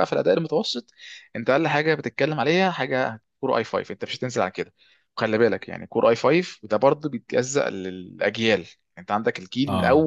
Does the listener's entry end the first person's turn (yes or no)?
no